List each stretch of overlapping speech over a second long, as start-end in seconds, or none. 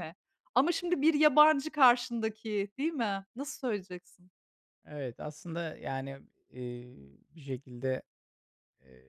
none